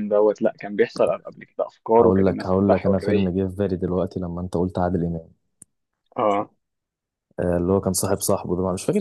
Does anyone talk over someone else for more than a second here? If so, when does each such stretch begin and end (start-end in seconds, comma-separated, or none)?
2.0-3.3